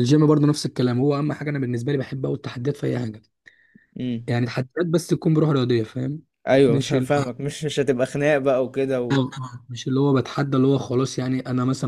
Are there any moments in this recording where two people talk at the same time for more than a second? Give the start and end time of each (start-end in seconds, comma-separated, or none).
none